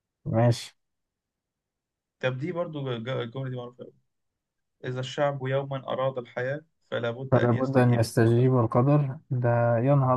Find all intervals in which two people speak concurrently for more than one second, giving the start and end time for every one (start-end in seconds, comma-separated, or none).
7.3-8.5